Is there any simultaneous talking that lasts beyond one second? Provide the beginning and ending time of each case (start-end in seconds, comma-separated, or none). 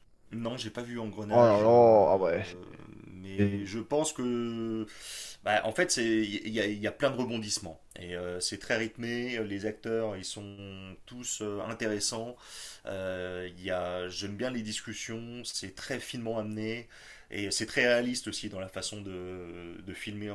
1.3-2.6